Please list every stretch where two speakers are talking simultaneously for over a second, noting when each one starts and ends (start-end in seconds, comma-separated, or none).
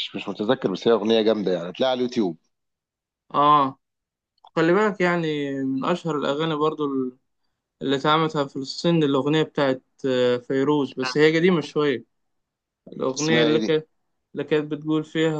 none